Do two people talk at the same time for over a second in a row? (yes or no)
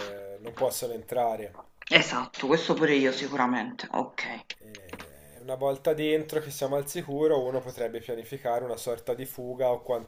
no